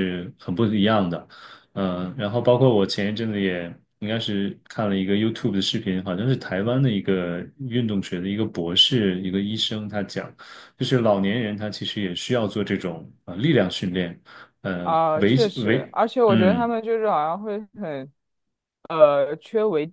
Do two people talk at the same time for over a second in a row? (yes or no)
yes